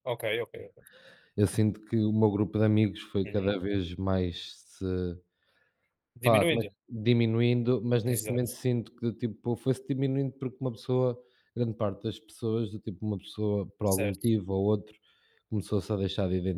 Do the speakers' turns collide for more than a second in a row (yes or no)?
no